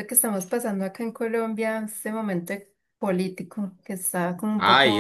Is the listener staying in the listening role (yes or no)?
no